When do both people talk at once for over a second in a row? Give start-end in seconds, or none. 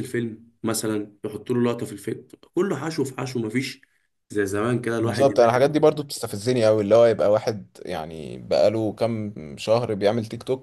none